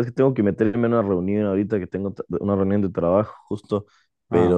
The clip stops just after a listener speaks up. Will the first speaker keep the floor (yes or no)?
yes